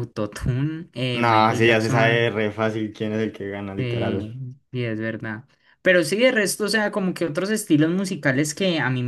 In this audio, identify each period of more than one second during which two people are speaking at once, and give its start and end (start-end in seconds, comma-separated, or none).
1.1-2.3